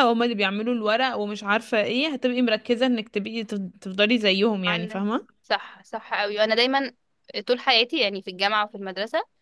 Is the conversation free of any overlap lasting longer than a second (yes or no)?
yes